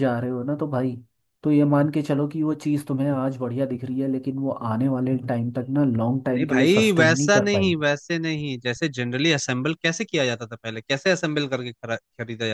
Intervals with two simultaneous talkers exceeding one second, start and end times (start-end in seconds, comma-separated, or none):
6.4-7.8